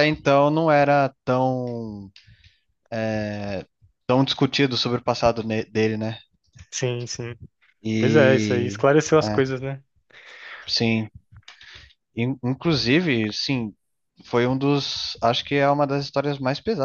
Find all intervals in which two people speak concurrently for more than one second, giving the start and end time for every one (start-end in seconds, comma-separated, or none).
8.0-9.4